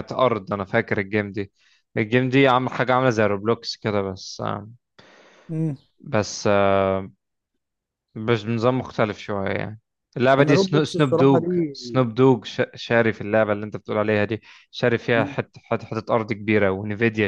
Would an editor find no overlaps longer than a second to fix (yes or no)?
no